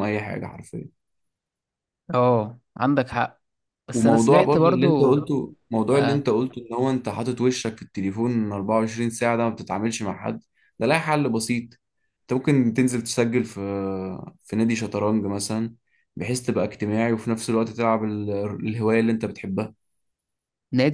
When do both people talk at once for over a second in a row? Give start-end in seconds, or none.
3.9-5.2